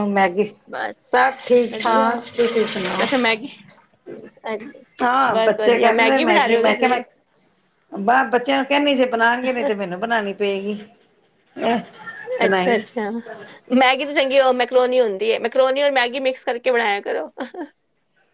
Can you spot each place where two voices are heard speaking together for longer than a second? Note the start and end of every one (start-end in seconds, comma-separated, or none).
5.3-7.0